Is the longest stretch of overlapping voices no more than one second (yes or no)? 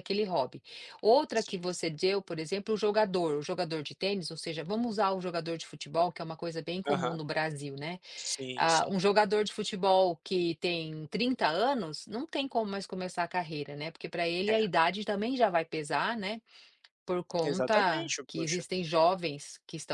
no